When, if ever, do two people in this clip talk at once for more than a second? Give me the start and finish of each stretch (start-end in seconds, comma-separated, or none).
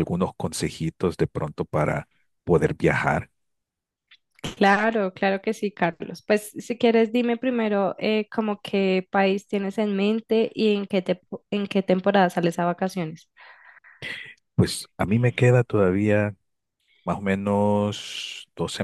none